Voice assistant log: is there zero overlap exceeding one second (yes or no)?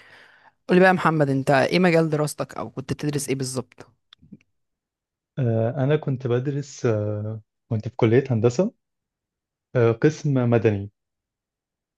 yes